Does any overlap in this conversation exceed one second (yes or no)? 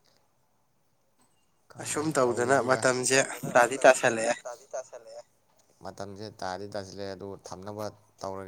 yes